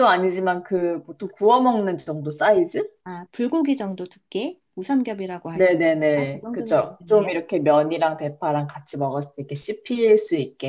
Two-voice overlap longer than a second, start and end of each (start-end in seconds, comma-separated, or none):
5.5-7.3